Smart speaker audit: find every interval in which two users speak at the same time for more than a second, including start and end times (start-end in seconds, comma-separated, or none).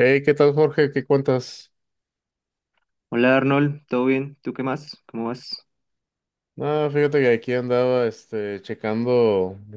none